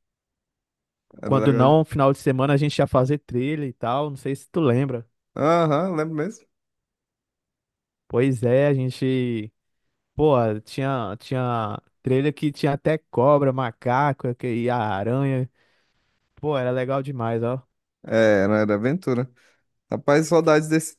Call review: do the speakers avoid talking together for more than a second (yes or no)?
yes